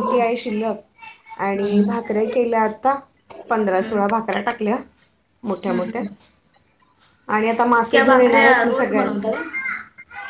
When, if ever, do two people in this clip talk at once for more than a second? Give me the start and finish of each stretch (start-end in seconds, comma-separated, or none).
7.8-9.3